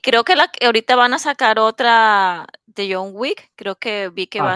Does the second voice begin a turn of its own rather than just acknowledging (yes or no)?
yes